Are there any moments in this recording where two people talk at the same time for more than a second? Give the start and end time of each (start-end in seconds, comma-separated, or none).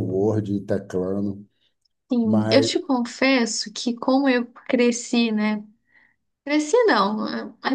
none